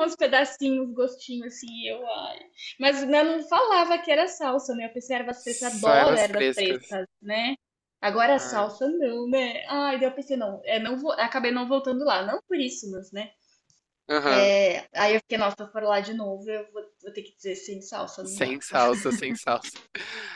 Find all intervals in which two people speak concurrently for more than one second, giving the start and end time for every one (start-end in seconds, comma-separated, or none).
5.4-6.8